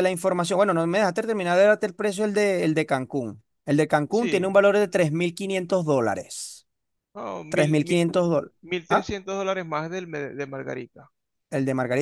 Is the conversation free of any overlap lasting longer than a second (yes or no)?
yes